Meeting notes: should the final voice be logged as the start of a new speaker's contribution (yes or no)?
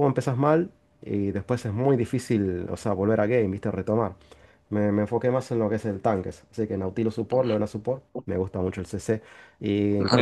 yes